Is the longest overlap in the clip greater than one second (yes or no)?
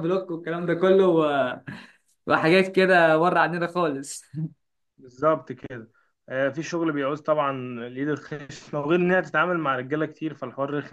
no